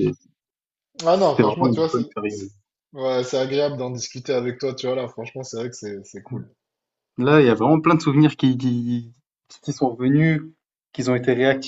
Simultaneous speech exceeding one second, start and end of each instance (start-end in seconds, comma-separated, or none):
1.1-2.5